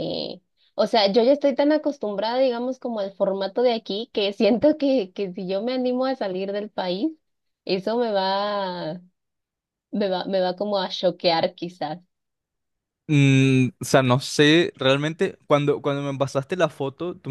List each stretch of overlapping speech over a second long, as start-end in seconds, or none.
none